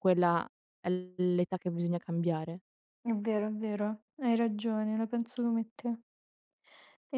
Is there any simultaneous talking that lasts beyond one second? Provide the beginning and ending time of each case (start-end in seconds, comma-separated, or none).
none